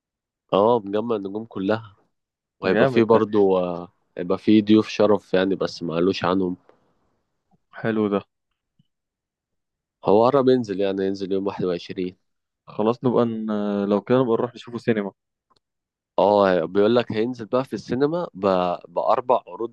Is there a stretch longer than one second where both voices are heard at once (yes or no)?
no